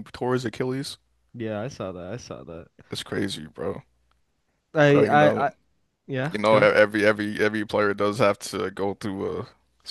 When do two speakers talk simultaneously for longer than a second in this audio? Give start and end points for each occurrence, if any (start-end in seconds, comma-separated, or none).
none